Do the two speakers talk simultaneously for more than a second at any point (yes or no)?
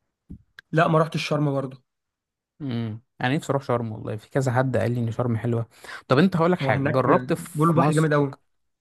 yes